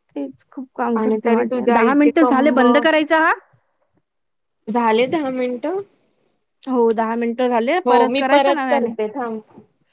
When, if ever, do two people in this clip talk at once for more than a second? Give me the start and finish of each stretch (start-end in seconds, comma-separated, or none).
1.0-2.6